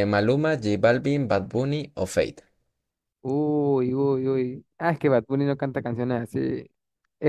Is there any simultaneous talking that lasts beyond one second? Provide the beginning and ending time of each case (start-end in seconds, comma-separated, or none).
none